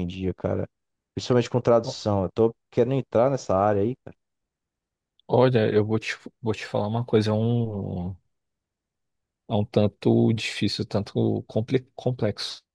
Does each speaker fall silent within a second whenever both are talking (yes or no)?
yes